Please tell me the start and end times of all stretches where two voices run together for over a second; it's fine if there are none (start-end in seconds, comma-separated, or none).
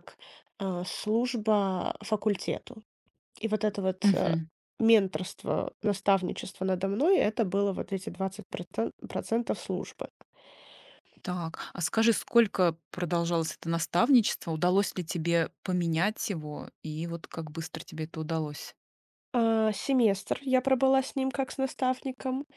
none